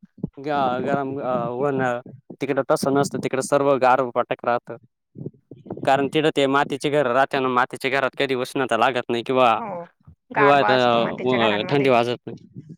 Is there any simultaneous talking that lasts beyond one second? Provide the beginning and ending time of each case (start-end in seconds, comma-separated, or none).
10.4-11.9